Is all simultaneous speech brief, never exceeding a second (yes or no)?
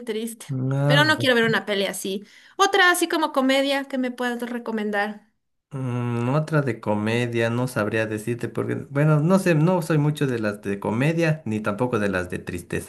yes